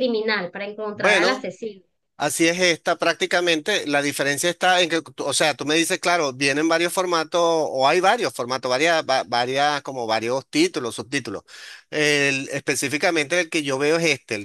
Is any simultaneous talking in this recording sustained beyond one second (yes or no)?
no